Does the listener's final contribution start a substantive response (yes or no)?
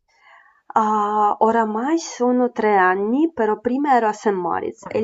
no